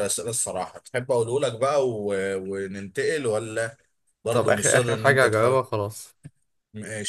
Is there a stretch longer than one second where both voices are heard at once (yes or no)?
yes